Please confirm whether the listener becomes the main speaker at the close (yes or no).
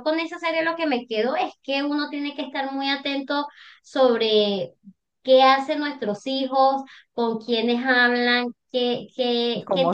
yes